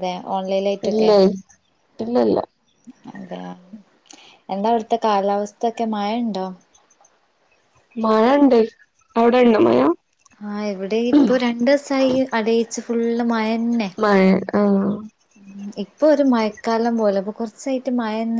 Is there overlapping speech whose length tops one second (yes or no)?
no